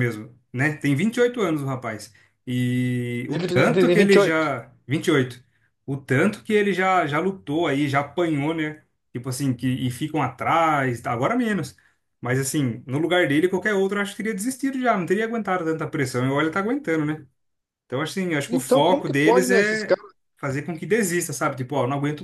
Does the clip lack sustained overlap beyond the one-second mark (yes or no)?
no